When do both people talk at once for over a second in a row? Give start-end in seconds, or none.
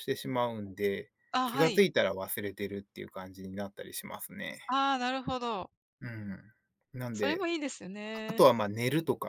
none